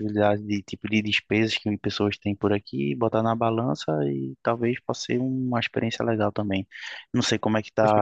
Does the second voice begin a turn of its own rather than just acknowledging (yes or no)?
yes